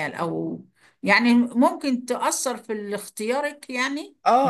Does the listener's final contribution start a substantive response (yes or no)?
yes